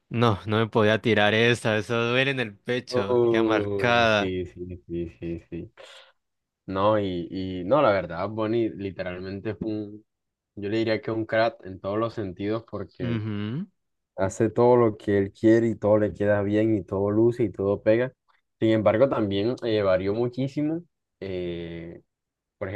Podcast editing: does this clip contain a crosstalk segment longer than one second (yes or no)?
yes